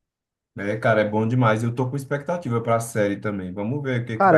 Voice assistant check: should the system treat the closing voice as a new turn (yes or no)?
yes